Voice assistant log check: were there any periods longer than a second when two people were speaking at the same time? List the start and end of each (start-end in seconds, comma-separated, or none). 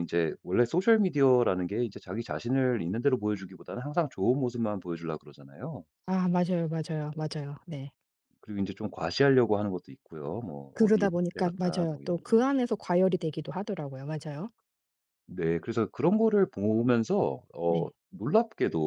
10.7-12.4